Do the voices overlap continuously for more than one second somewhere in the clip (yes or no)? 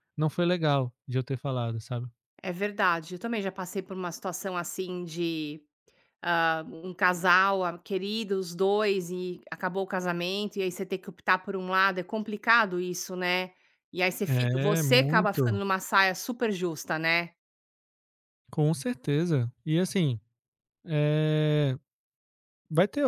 yes